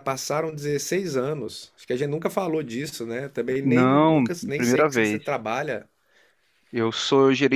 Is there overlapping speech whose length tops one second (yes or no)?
yes